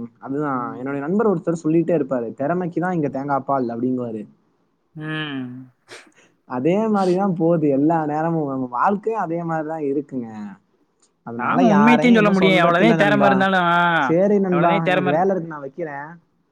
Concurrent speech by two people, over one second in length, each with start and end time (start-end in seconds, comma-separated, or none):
11.5-13.3